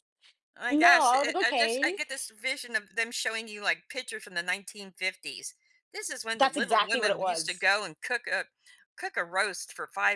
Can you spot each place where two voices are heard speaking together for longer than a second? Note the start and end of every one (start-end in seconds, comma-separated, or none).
0.7-2.0, 6.4-7.7